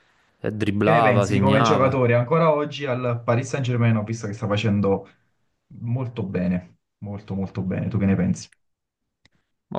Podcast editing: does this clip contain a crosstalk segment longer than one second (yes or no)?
yes